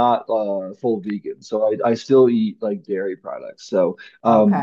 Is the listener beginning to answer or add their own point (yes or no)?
no